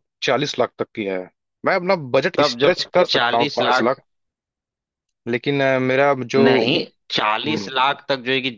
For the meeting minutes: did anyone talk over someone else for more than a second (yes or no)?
yes